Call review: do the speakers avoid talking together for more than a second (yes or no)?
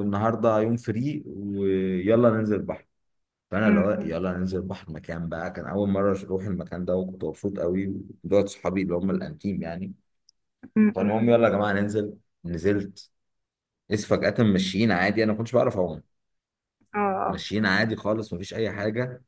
yes